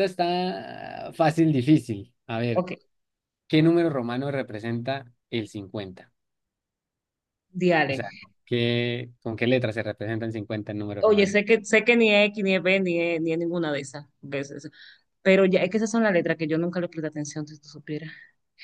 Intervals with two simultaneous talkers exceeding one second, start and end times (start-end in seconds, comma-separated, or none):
none